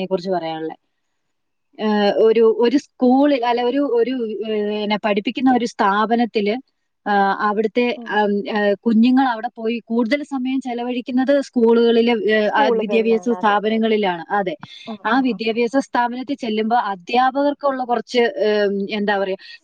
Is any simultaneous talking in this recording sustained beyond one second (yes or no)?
yes